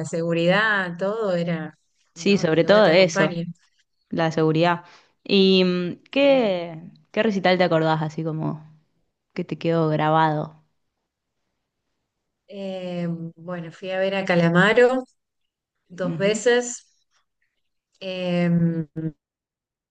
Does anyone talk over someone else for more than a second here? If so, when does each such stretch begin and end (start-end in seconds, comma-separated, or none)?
2.1-3.3